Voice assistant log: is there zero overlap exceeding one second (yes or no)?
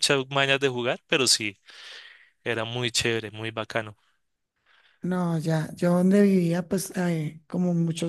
yes